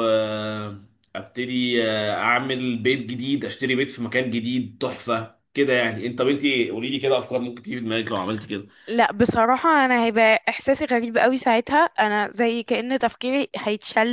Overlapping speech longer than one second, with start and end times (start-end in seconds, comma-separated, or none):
none